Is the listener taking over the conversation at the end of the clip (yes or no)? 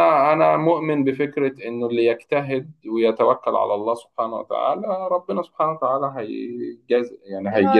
yes